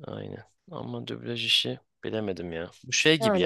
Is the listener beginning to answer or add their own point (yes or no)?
no